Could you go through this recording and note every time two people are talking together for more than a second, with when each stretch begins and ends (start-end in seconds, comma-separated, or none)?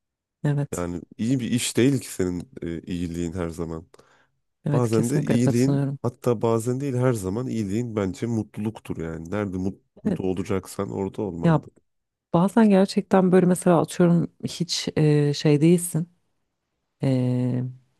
4.7-6.0